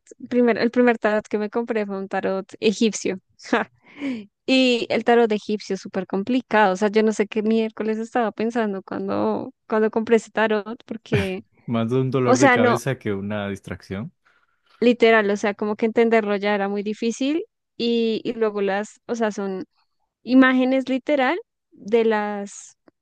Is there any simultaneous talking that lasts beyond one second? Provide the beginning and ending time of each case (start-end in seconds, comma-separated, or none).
none